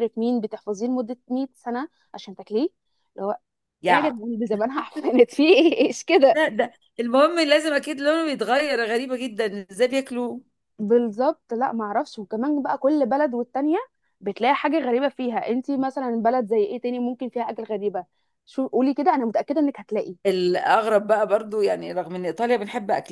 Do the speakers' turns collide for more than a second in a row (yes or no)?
no